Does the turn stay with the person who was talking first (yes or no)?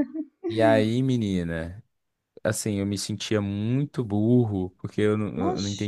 yes